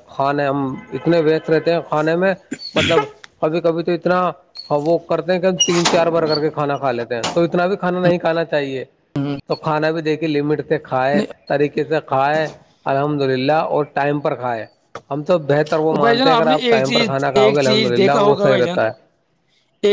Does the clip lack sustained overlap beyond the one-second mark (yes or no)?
no